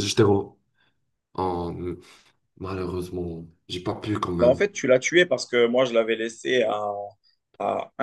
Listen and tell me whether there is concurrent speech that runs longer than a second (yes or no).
no